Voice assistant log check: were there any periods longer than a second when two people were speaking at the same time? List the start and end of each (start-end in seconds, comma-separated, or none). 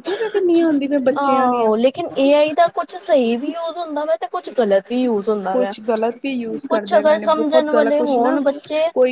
6.7-8.4